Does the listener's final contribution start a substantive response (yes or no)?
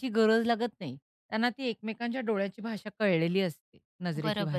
yes